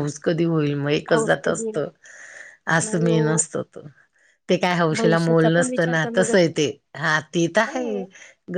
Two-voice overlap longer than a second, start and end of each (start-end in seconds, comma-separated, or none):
5.0-6.5